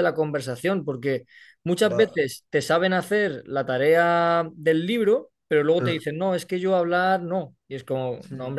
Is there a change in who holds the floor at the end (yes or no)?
no